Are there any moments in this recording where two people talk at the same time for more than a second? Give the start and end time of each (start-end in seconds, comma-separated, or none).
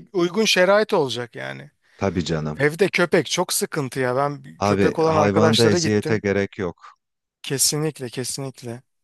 4.7-6.2